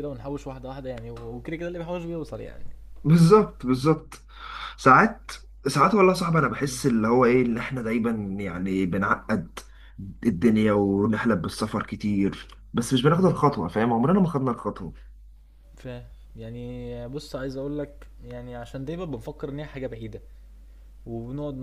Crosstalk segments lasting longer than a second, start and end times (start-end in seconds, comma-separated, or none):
none